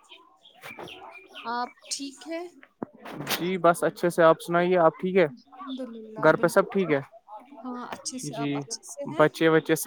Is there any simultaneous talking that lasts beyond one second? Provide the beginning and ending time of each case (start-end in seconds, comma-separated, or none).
none